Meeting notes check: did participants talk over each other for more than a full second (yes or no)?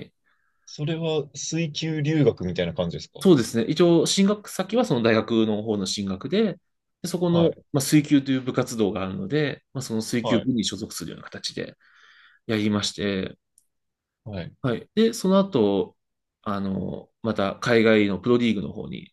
no